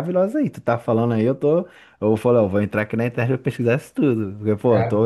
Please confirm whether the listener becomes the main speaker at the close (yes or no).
no